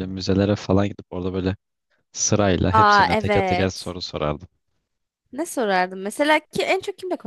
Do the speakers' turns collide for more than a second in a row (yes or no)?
yes